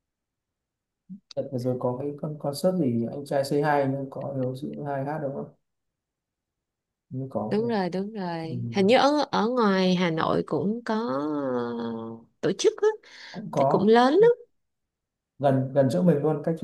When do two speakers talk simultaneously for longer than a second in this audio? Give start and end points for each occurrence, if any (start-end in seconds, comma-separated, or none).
none